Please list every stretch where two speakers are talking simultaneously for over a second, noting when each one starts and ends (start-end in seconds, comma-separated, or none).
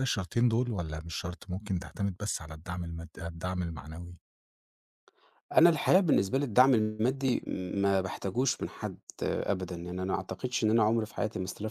none